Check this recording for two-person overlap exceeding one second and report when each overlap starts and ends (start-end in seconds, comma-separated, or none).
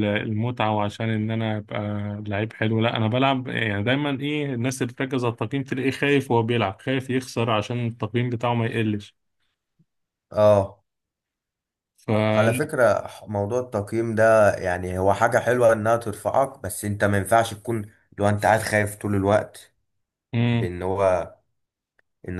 none